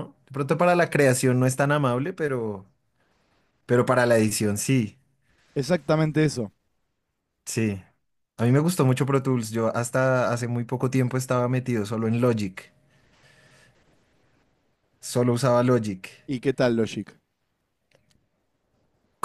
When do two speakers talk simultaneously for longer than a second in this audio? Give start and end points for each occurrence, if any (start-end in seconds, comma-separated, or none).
none